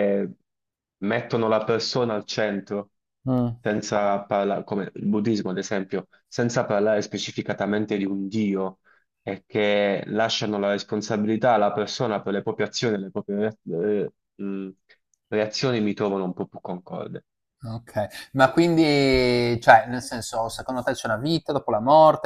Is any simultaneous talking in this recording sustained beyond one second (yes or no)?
no